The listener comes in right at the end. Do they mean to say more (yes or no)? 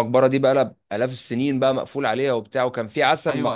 no